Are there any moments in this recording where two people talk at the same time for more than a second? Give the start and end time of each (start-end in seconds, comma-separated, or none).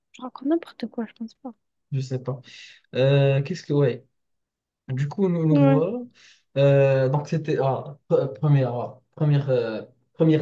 none